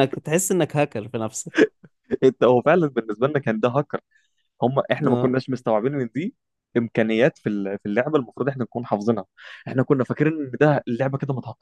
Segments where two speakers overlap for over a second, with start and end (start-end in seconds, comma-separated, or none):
none